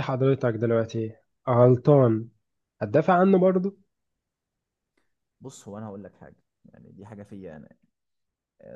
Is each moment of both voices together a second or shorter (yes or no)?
yes